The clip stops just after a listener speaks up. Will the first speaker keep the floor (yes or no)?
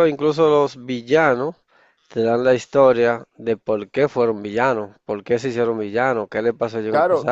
no